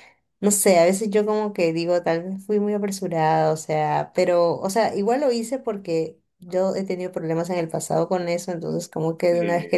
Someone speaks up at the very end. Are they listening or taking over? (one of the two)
listening